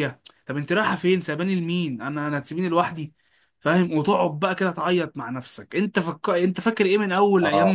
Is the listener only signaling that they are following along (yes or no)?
yes